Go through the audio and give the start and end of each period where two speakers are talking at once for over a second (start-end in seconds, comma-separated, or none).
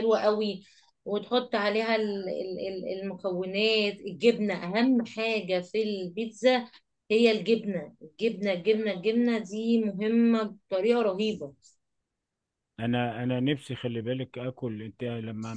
none